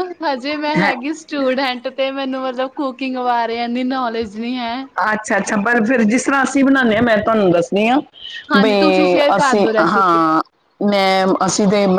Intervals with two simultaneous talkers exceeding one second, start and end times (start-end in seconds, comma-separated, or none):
8.6-10.2